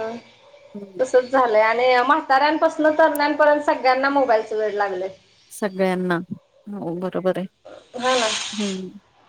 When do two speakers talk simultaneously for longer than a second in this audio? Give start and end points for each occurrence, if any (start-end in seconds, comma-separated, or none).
none